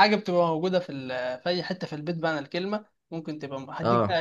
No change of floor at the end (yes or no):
yes